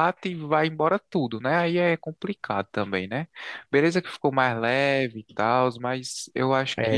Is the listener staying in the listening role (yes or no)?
no